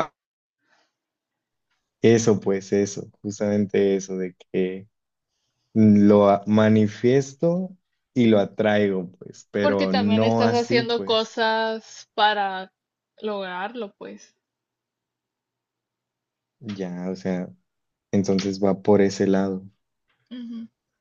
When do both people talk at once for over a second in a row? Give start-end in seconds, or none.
9.6-11.4